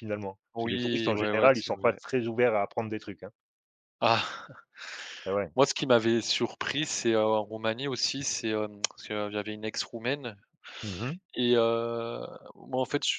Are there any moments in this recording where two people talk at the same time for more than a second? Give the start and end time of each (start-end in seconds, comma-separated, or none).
0.5-2.0